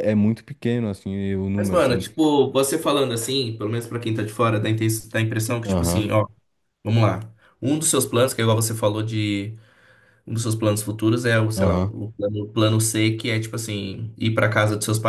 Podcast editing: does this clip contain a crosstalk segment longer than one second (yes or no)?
no